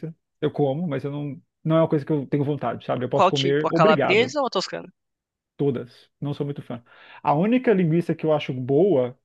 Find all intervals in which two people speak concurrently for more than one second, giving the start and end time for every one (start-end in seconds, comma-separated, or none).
3.1-4.3